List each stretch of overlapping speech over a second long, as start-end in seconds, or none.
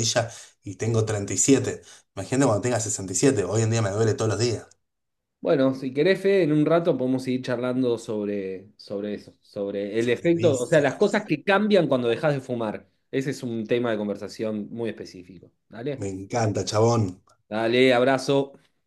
10.0-11.3